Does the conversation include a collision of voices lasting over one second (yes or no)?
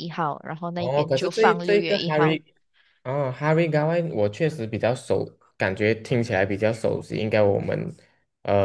yes